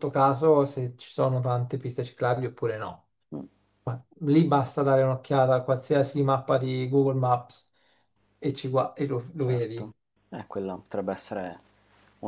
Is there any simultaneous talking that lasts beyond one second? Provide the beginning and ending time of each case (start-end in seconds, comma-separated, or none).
none